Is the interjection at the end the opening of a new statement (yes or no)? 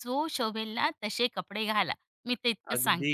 yes